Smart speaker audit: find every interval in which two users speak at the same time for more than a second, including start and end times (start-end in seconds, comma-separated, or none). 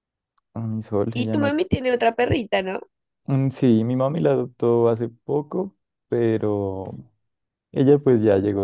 none